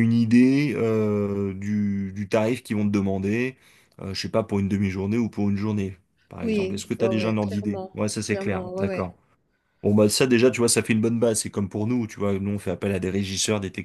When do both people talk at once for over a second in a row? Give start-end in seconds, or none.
6.4-9.1